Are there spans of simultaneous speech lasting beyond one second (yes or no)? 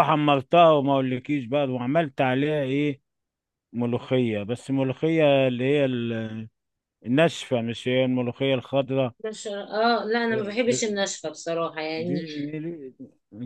no